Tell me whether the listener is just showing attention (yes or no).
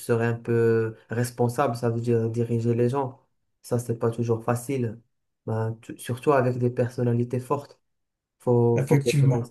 yes